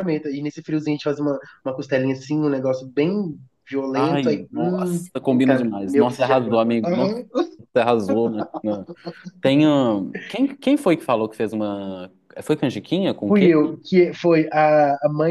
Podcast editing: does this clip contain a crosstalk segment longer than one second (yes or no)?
yes